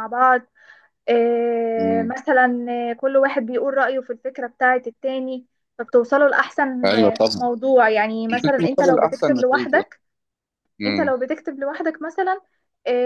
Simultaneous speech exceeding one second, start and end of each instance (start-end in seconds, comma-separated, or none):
8.4-9.8